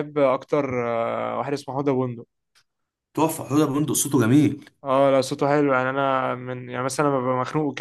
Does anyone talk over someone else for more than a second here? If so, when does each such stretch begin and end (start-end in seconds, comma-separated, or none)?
none